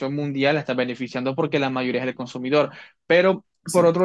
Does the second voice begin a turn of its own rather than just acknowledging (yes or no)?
no